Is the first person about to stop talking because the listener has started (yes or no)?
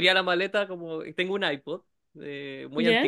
no